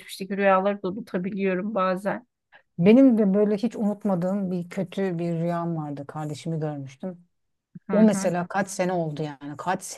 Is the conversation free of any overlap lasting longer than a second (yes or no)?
yes